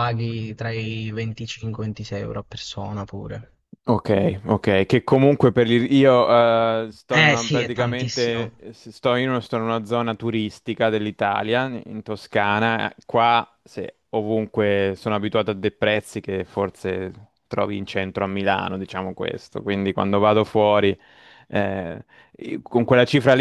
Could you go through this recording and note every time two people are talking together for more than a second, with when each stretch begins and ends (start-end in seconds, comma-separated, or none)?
7.1-8.7